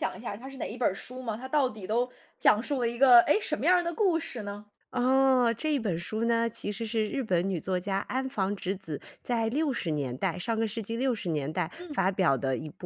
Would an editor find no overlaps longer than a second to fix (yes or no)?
yes